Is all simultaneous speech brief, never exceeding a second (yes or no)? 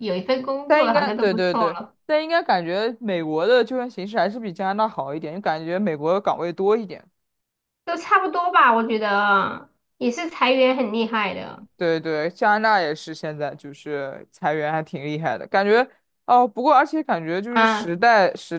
no